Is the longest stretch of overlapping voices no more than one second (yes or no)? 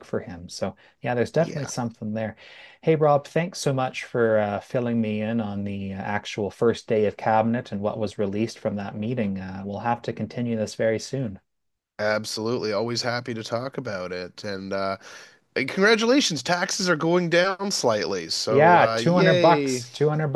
no